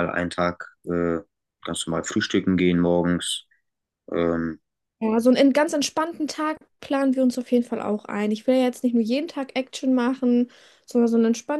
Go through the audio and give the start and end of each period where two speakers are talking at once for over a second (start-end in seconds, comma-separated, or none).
none